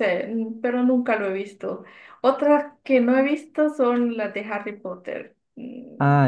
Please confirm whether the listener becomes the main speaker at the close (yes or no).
yes